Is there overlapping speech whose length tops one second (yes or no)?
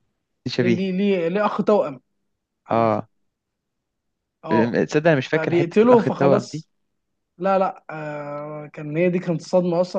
yes